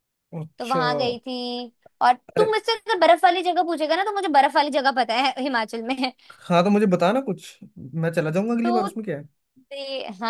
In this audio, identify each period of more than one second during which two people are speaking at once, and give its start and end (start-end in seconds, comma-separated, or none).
none